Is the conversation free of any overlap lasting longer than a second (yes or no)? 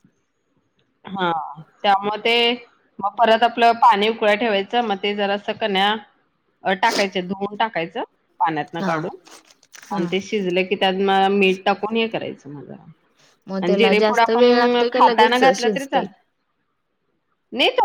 no